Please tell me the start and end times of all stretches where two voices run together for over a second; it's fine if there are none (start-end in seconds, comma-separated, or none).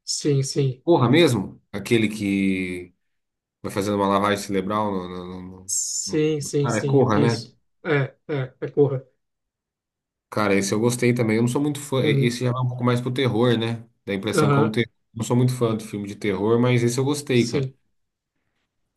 5.7-7.5